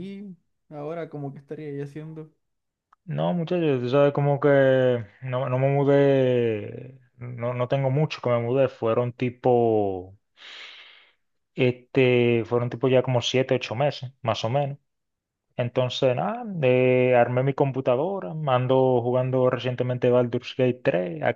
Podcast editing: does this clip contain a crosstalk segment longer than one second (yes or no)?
no